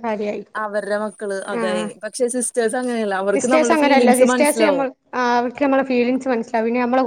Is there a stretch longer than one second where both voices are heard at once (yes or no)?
yes